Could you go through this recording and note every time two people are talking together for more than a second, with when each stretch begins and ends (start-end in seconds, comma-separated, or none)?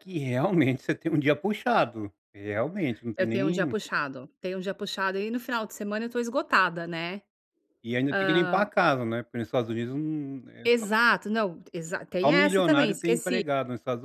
12.2-13.4